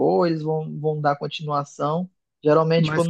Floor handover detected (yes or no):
no